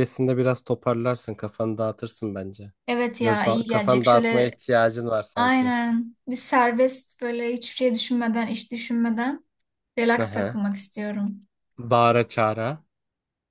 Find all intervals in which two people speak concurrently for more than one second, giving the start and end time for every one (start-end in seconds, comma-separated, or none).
3.2-4.5